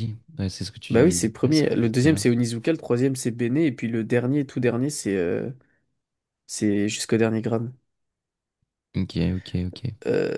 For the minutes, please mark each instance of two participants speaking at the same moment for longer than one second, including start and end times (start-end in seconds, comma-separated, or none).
0.9-2.3